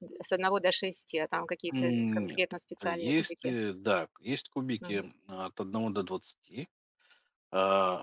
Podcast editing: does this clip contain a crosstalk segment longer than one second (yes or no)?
yes